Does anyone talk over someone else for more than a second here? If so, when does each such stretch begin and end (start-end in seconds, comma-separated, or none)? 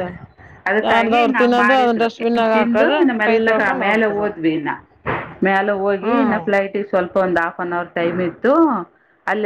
0.9-3.1